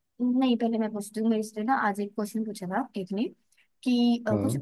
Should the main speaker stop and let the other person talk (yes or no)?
no